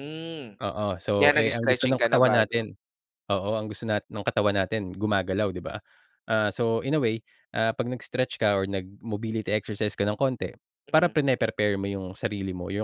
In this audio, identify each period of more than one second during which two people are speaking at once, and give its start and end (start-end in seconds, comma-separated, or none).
1.1-2.6